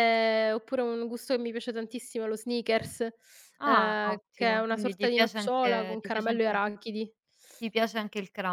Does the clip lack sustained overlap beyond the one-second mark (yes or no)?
no